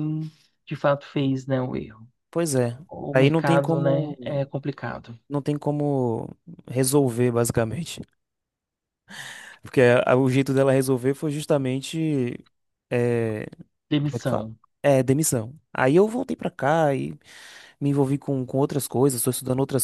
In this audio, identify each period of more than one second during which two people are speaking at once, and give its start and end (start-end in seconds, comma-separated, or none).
2.9-4.2